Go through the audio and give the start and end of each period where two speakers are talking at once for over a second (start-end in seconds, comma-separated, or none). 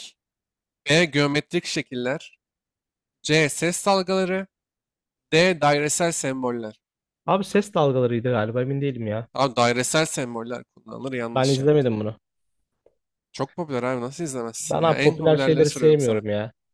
14.6-16.2